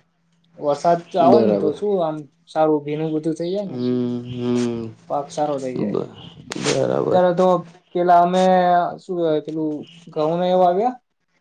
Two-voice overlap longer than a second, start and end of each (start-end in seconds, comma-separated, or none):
none